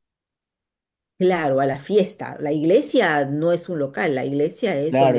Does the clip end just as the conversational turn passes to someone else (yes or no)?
yes